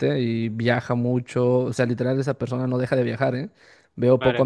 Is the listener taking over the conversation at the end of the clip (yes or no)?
no